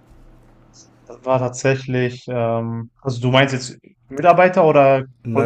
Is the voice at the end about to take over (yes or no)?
yes